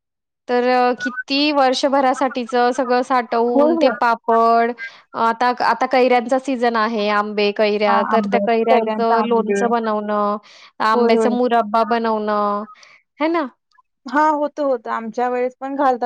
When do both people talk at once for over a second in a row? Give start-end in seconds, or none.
7.9-9.6